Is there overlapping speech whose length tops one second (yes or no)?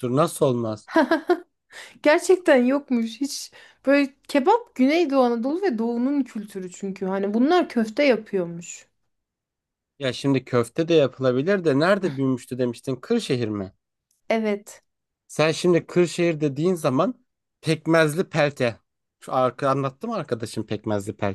no